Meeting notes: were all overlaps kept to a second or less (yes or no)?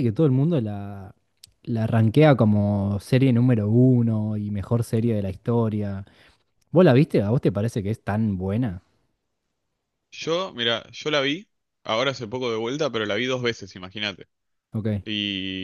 yes